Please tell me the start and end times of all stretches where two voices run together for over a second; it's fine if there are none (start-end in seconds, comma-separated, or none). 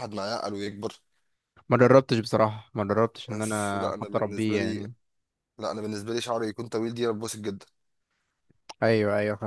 3.3-4.9